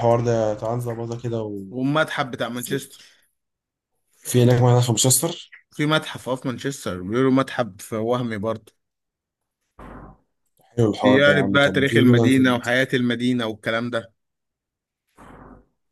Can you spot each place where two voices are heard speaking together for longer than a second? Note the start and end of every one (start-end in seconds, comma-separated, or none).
11.0-12.4